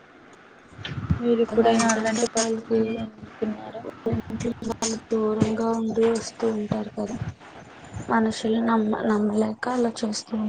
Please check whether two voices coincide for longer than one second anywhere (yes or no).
yes